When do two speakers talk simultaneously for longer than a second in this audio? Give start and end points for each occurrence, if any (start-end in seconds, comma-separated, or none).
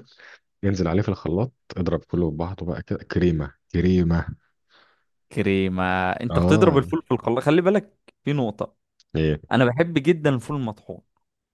none